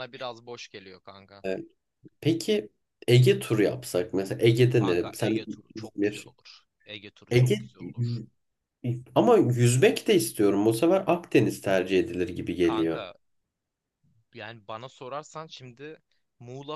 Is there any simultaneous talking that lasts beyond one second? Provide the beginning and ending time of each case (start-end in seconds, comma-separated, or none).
4.7-6.3